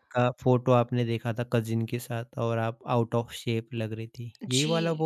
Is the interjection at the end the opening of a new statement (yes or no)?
yes